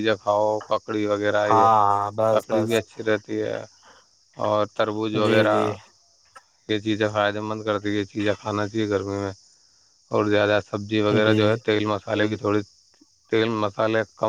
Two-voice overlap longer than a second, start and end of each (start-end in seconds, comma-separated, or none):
none